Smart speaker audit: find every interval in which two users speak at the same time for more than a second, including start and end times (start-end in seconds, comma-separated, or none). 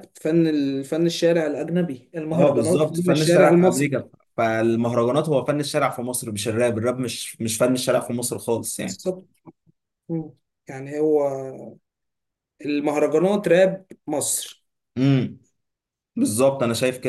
2.3-4.0